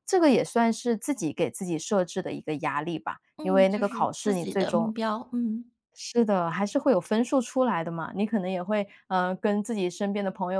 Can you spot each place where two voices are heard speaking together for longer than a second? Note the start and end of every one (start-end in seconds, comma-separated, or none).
3.4-4.9